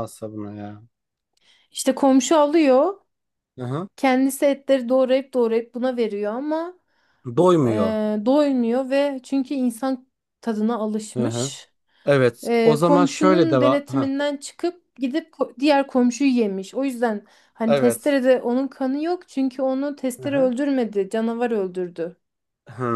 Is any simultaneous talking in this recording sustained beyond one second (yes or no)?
yes